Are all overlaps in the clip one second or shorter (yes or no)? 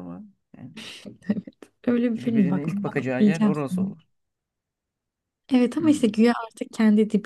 no